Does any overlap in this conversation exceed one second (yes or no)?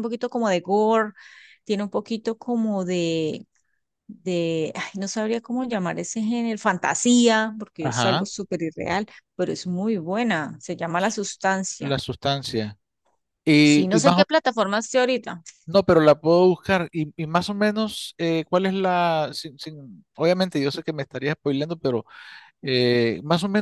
no